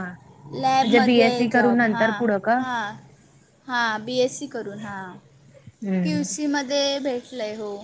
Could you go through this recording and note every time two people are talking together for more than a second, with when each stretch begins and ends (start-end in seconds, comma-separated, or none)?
0.8-2.1